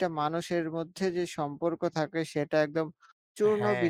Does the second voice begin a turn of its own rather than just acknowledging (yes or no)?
no